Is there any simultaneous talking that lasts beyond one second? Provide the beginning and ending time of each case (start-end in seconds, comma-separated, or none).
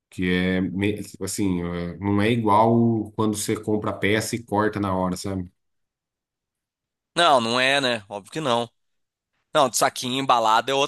none